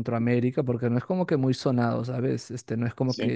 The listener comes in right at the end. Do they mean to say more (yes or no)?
no